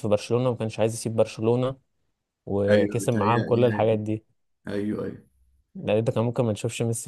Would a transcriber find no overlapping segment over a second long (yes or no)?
no